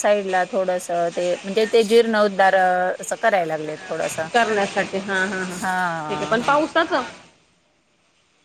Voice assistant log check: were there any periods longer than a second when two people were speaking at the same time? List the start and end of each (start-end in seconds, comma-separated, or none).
none